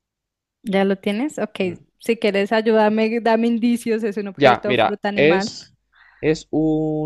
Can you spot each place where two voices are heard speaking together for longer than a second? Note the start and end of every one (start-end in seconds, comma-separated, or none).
4.3-5.7